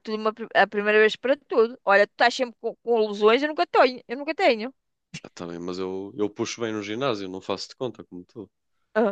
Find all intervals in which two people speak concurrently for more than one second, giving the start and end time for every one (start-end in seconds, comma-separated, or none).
none